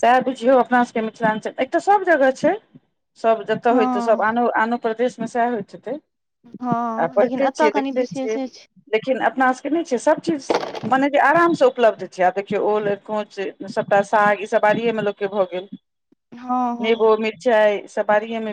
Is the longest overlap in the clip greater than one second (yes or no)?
yes